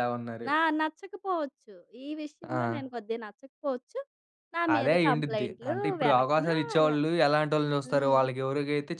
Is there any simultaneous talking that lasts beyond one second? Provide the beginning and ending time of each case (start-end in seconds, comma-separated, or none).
4.8-7.0